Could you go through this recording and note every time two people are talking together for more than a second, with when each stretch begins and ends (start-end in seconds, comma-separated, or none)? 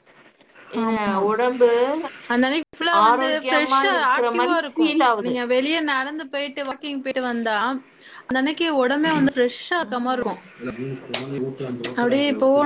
3.1-5.3